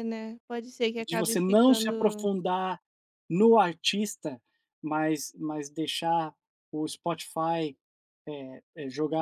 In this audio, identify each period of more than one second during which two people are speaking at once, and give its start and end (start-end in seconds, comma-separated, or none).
1.1-2.3